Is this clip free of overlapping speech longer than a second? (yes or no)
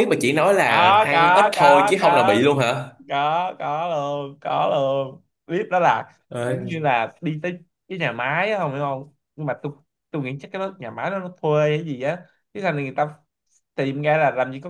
no